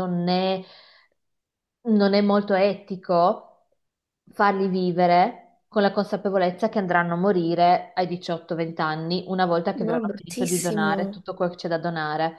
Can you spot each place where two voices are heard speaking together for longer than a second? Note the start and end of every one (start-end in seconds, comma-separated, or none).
9.7-11.2